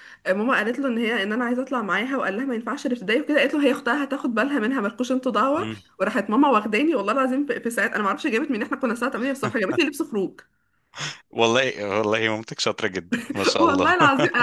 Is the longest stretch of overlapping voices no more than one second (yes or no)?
yes